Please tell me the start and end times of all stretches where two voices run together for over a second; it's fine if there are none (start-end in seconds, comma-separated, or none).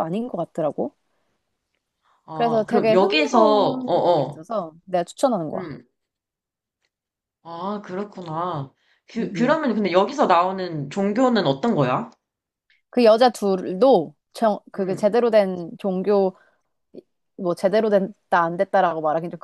2.3-4.4